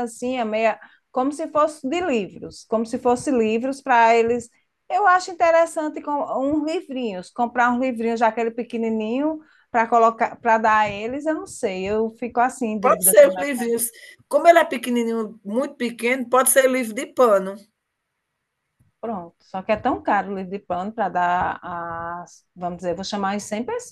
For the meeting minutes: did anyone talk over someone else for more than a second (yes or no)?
no